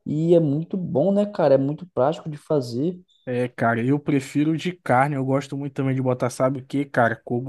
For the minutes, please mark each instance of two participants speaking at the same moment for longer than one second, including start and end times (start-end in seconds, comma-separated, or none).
none